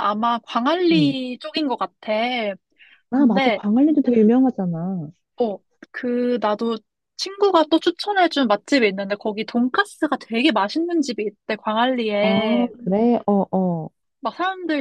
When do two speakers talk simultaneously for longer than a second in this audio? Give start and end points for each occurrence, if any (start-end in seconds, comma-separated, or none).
none